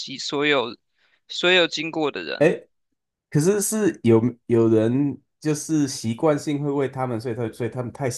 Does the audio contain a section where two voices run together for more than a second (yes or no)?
no